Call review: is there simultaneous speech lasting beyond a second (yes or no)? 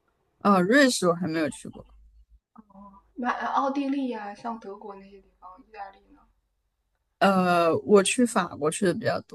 no